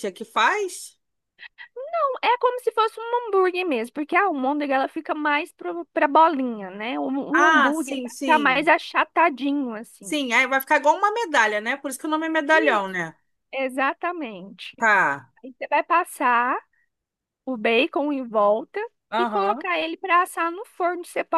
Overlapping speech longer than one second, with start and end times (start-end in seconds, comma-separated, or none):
7.3-8.7